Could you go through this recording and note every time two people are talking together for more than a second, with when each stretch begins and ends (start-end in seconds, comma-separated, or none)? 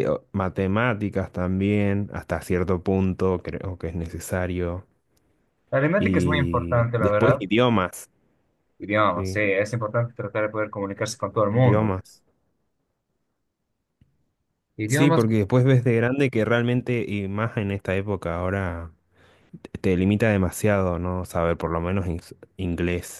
6.0-7.4